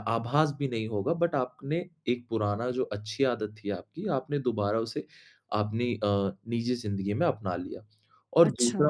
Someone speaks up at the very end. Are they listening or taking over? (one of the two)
listening